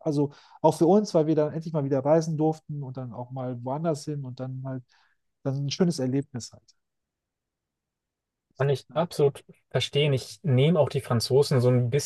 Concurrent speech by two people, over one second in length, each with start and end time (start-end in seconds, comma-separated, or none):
none